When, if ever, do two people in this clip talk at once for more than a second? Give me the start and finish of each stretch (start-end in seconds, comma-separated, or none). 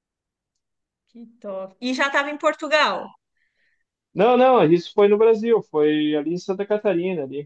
none